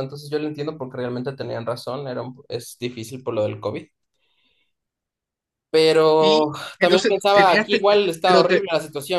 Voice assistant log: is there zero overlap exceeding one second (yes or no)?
no